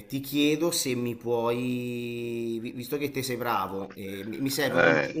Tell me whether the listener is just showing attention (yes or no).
yes